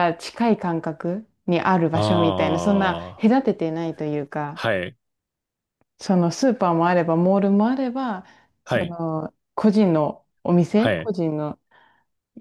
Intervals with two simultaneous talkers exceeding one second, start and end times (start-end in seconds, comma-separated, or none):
1.9-3.4